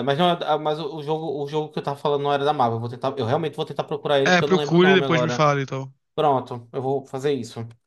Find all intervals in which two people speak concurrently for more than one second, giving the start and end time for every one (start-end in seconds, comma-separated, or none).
4.2-5.5